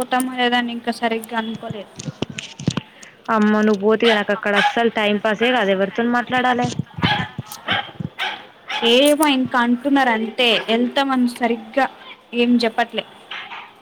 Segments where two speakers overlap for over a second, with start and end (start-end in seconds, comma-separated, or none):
5.1-6.7